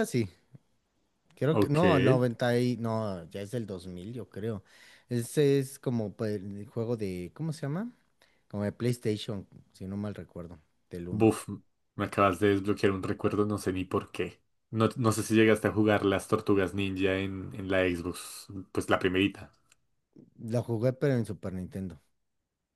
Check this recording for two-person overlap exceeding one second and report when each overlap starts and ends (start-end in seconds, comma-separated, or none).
none